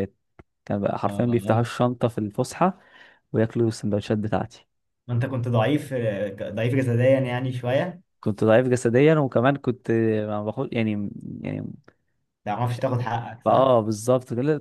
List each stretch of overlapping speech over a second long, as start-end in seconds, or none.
none